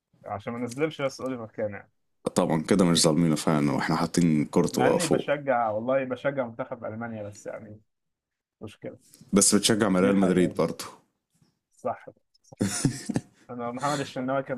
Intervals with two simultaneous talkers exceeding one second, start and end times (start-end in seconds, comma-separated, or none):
none